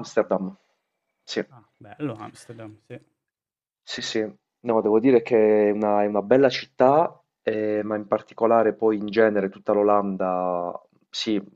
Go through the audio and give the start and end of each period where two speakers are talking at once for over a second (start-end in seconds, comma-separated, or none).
none